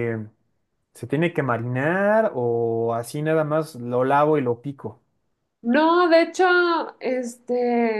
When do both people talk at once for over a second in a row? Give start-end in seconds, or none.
none